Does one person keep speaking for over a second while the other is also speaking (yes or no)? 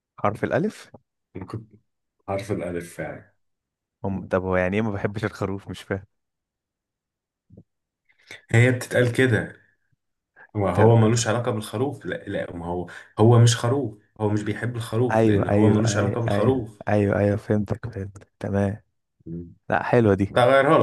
yes